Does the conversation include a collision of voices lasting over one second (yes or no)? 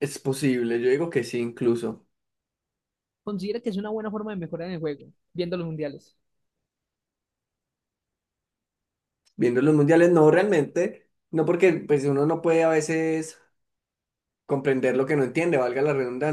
no